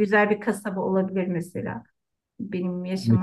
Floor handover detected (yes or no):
yes